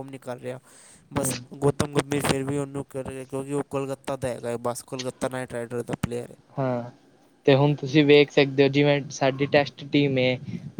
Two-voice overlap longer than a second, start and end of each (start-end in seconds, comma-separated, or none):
none